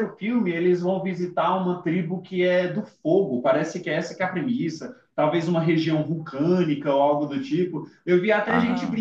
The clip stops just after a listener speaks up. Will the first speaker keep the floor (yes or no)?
yes